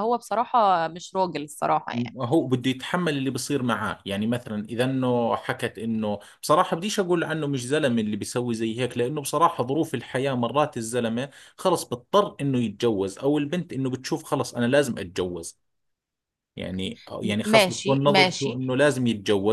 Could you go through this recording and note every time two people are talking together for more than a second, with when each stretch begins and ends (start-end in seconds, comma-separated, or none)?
17.2-18.6